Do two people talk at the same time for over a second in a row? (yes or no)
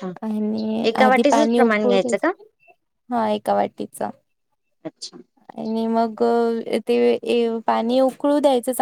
yes